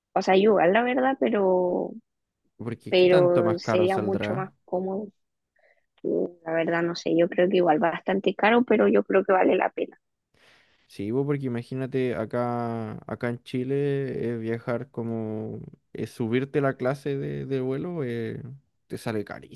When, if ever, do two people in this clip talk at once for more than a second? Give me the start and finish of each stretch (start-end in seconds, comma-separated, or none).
2.9-4.5